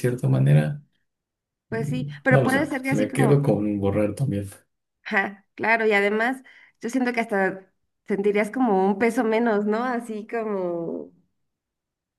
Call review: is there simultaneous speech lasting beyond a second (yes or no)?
yes